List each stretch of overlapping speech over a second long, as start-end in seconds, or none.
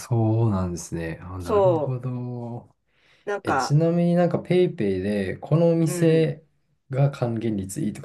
none